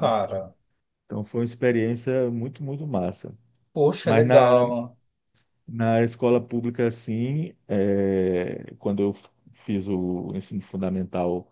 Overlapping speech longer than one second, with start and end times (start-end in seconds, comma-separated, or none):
none